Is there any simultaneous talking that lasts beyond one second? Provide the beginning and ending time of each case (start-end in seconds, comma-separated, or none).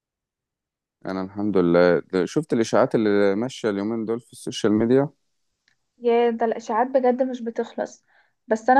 none